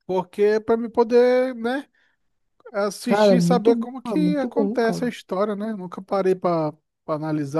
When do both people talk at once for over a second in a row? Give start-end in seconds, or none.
3.1-5.1